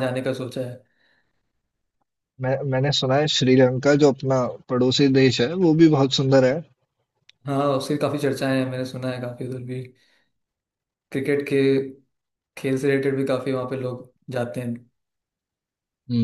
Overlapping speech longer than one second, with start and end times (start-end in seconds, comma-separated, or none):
none